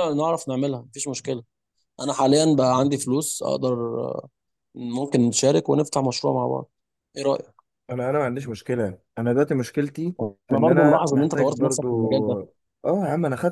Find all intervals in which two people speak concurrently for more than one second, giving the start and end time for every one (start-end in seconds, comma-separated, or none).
10.5-11.9